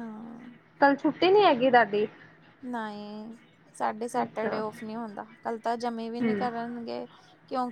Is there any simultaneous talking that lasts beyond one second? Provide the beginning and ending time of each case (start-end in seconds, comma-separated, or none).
none